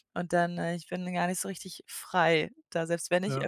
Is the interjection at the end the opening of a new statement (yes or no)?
no